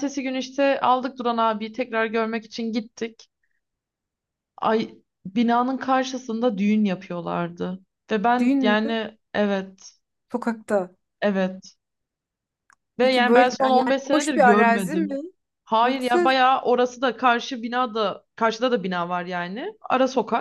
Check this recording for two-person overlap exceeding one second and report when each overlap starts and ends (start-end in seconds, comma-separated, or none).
13.0-15.2